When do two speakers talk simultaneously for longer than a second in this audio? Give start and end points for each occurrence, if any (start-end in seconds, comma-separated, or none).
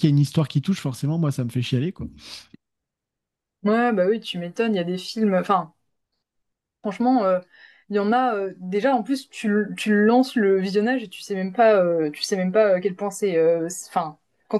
none